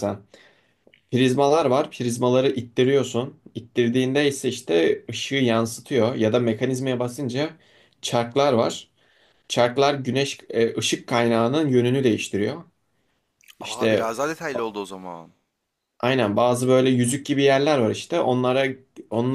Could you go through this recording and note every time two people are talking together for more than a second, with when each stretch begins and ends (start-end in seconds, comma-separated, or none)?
none